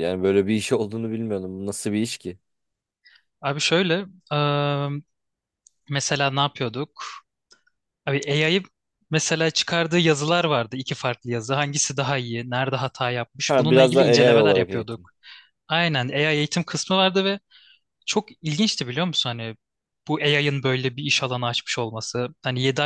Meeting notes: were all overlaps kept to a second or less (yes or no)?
no